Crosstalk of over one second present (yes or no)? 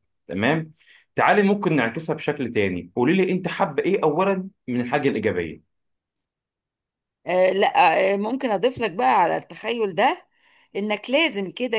no